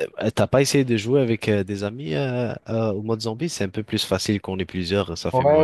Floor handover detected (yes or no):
yes